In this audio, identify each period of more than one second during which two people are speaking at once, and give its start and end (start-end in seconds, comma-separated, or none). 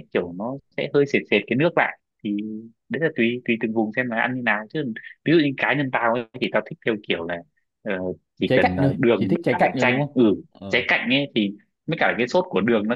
8.4-10.8